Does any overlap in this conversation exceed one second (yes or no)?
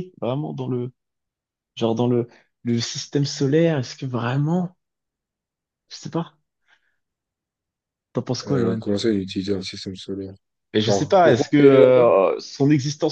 yes